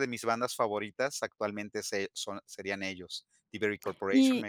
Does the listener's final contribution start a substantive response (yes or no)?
yes